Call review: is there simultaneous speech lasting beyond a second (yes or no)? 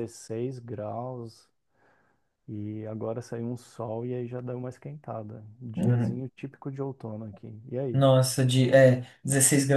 no